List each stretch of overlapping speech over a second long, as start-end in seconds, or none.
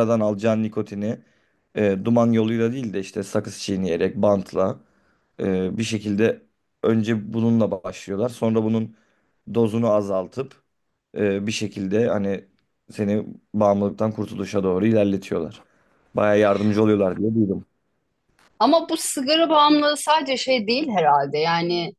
none